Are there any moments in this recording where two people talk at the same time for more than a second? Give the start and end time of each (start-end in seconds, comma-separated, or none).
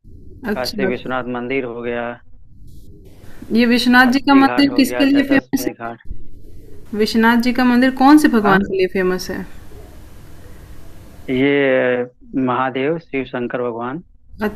4.1-5.7